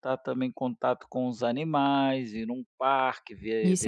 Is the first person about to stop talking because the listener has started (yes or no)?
yes